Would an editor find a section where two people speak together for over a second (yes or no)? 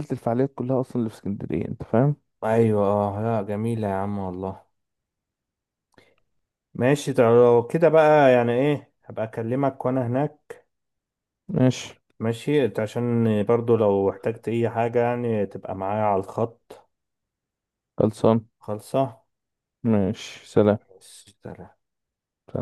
no